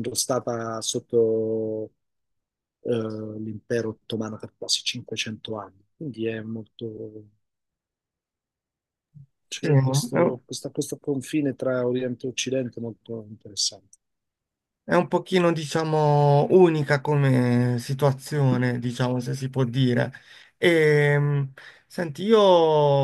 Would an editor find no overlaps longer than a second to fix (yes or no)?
yes